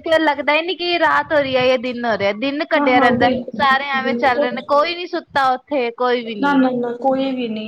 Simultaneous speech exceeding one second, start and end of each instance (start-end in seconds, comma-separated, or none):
2.8-4.5